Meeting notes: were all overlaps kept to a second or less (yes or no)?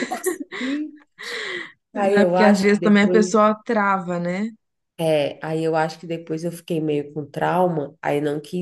no